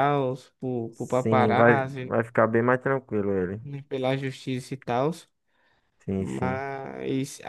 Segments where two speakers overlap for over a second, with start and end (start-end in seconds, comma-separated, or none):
0.9-2.2